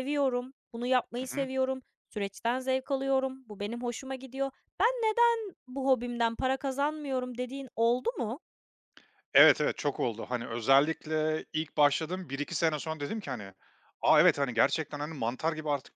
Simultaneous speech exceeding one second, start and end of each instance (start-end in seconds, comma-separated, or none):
none